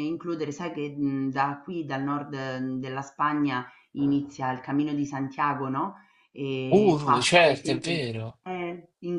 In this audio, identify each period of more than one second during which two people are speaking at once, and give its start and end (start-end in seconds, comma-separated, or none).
6.7-8.0